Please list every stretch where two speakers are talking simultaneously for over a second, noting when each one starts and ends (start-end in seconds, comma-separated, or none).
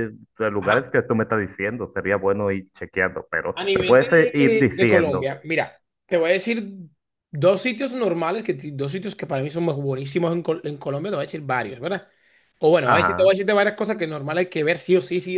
3.5-5.3